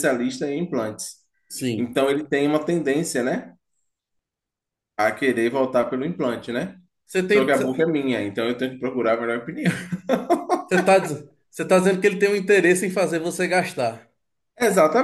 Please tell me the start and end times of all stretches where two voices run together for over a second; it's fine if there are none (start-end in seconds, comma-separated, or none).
none